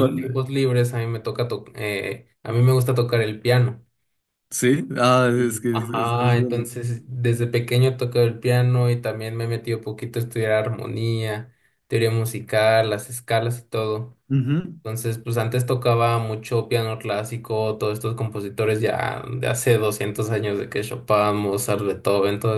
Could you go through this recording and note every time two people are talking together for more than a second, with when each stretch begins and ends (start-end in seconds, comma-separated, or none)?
5.4-6.9